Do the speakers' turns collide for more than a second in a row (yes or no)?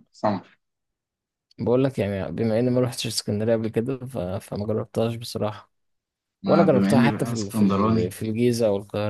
yes